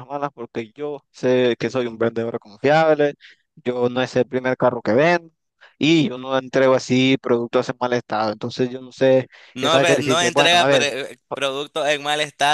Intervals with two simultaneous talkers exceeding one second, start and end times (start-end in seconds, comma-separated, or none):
9.5-10.9